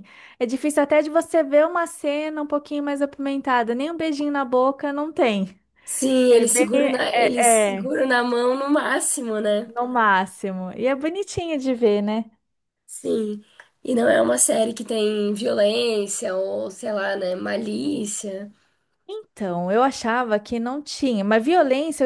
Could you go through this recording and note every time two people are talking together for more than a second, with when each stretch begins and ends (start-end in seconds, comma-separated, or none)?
6.3-7.9